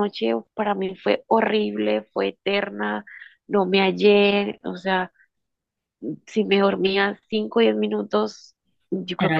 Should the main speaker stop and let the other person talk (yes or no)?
no